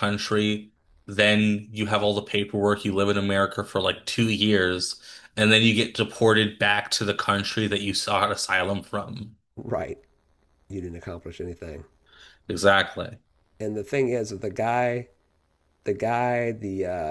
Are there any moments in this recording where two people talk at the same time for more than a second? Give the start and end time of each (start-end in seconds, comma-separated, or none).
none